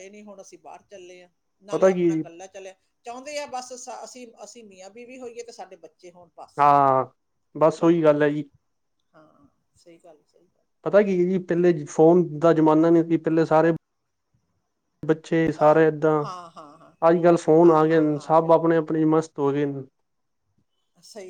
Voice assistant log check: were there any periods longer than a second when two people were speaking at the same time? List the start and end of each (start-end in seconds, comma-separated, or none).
17.3-19.0